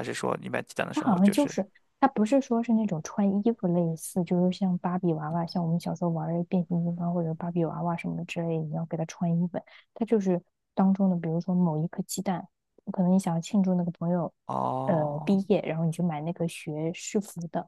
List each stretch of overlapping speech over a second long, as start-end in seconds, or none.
none